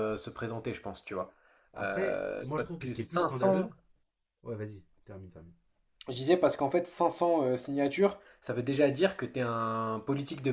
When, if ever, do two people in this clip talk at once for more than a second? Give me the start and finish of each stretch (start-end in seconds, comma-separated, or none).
1.8-3.7